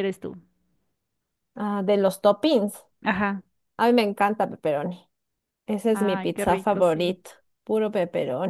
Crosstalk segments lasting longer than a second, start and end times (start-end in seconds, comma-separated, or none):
5.9-7.2